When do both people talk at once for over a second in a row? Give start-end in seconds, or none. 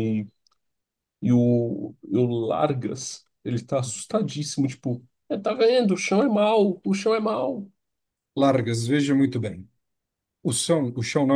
none